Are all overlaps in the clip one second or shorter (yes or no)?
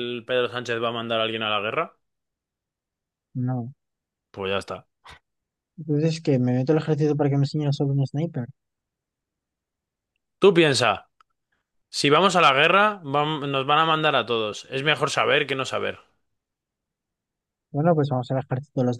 yes